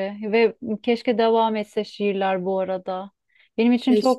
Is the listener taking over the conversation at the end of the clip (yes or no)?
no